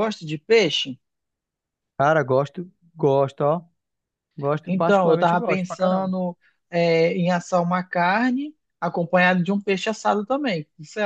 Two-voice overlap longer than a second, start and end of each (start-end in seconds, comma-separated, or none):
4.6-6.1